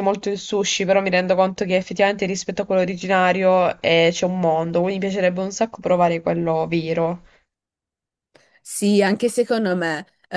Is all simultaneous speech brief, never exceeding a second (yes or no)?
yes